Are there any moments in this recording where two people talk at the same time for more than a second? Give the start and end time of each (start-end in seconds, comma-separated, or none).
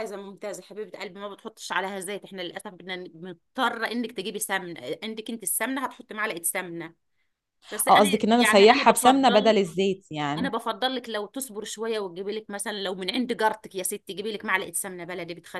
7.9-9.6